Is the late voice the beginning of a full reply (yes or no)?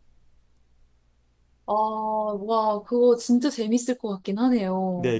yes